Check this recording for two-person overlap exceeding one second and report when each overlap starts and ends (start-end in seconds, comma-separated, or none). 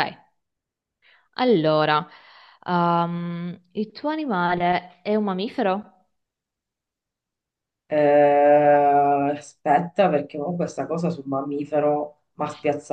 none